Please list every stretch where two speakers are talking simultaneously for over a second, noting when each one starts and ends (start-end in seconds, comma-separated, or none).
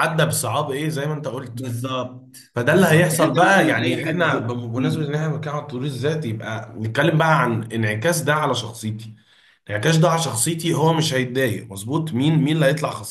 2.5-5.2